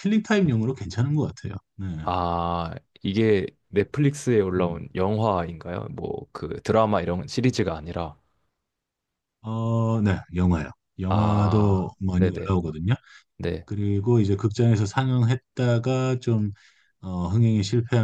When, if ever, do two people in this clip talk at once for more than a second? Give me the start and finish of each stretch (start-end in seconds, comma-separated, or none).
11.1-12.5